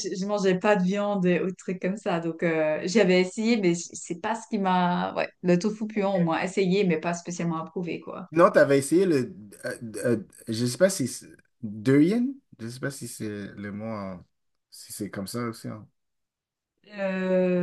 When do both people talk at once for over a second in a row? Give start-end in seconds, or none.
none